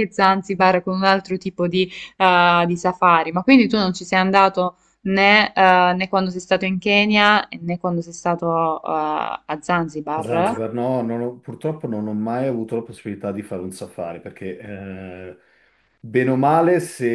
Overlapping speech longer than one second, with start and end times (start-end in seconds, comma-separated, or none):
none